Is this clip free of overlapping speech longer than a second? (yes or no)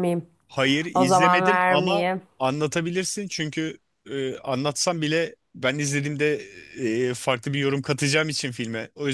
no